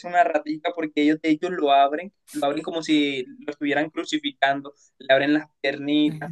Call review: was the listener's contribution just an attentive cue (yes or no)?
yes